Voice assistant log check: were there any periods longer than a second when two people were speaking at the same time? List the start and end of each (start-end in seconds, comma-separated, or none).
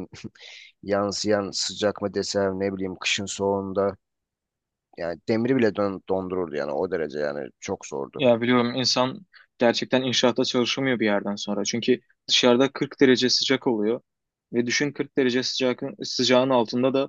none